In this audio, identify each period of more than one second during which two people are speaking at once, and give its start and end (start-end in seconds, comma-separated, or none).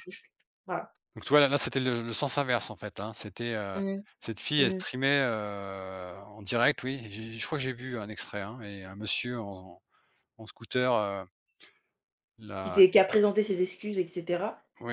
none